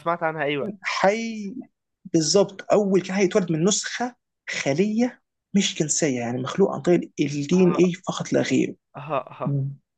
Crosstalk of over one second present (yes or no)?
no